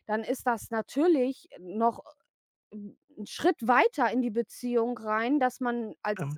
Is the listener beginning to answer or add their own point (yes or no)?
no